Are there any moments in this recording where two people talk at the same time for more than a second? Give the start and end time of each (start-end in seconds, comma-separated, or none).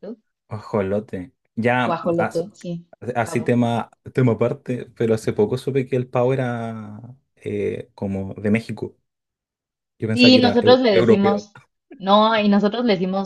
10.1-11.4